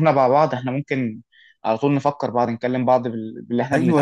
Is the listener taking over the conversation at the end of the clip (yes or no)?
yes